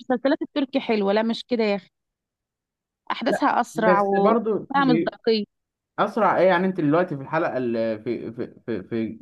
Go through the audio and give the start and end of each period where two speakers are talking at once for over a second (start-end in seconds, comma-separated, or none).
3.3-5.1